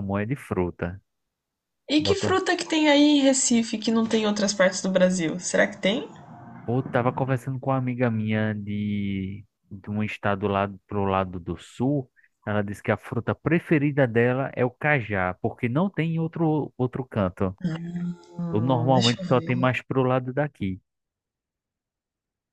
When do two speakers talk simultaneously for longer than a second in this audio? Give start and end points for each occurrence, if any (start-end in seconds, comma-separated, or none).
18.5-19.7